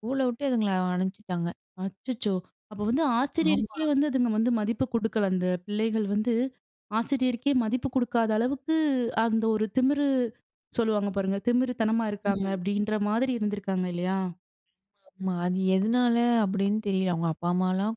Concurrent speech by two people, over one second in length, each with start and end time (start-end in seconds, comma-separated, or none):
none